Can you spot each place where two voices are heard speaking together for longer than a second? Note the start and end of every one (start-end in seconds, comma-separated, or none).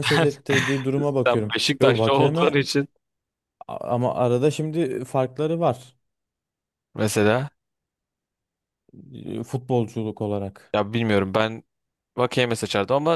1.3-2.7